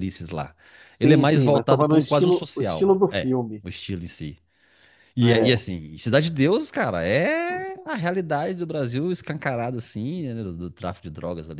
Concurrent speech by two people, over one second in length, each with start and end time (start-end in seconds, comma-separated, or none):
1.0-3.6